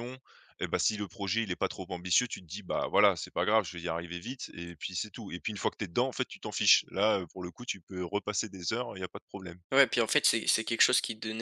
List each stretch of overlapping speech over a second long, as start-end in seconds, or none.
none